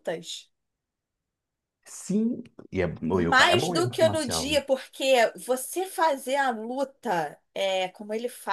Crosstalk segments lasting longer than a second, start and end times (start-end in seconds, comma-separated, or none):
3.1-4.6